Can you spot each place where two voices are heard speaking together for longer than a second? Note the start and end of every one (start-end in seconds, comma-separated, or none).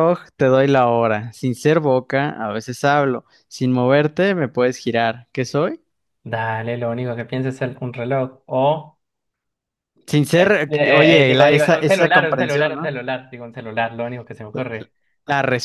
10.4-12.9